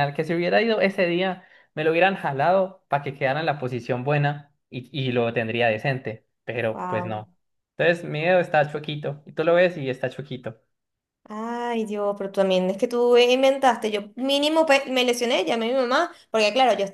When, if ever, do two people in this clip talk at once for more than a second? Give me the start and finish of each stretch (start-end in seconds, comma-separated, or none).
none